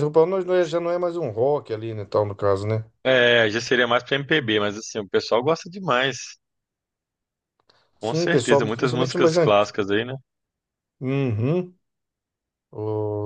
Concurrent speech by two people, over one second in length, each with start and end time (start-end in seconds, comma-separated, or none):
8.0-9.7